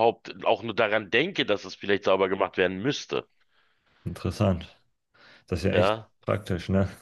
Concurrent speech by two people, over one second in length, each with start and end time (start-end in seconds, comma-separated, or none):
none